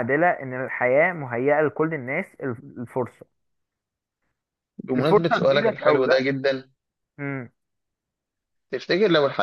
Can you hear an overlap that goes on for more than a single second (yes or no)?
yes